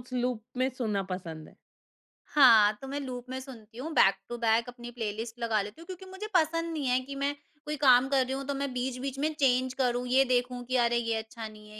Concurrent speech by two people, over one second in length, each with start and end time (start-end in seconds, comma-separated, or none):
none